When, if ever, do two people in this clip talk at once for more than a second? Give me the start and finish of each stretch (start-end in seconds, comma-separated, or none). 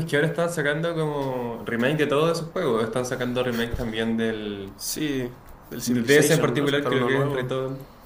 5.8-7.5